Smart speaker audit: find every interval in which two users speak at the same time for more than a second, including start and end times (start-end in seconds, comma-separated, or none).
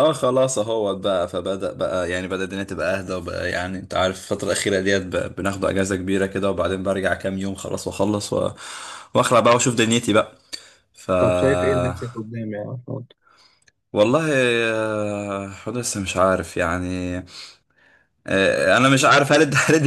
none